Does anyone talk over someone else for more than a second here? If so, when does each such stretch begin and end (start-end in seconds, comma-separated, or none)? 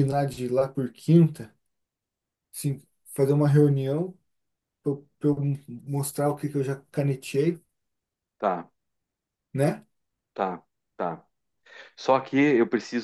none